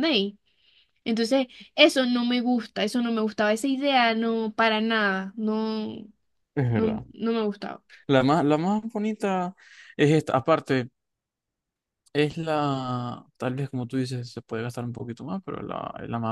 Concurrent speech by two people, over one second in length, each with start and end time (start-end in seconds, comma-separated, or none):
none